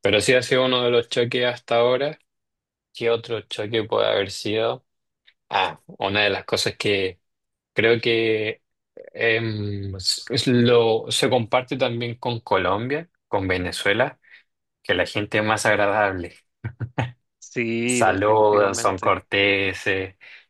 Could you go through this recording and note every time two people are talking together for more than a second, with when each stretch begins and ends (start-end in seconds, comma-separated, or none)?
17.9-19.2